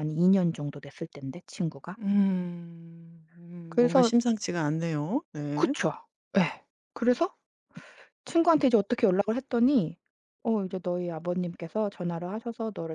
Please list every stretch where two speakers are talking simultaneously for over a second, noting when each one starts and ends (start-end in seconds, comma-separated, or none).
none